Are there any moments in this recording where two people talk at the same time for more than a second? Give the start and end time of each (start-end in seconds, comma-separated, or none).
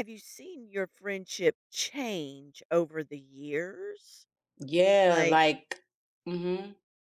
none